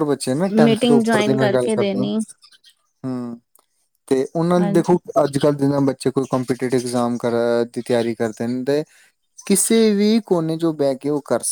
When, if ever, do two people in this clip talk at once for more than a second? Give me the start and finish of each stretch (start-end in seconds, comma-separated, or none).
0.7-2.1